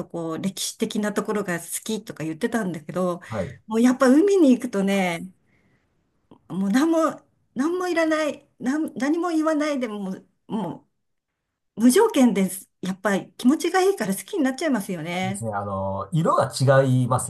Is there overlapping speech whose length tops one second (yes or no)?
no